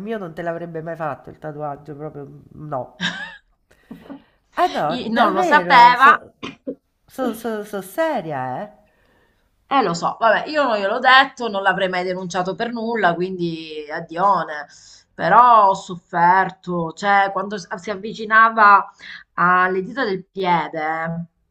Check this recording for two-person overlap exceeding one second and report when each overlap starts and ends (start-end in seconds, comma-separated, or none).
4.9-6.2